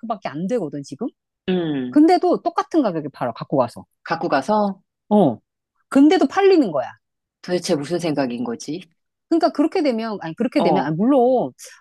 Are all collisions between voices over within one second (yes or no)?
yes